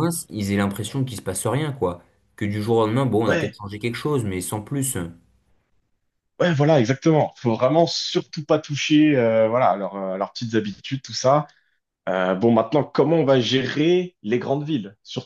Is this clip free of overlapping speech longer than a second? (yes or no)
yes